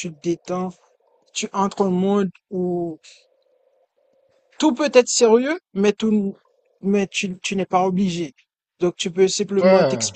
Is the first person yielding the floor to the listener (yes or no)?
no